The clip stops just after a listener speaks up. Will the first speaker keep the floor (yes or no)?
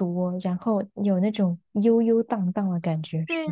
no